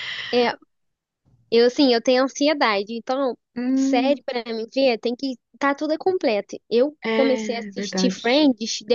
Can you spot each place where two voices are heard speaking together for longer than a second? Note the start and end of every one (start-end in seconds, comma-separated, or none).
7.0-8.2